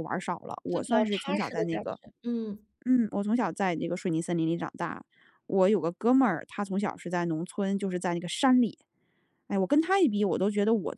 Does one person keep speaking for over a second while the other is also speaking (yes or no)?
yes